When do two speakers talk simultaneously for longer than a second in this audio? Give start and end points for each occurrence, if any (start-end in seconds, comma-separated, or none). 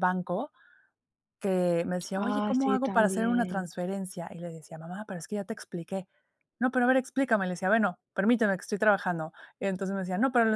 2.1-3.7